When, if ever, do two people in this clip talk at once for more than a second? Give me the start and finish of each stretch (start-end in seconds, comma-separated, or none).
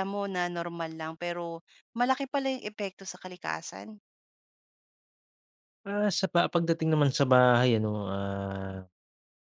none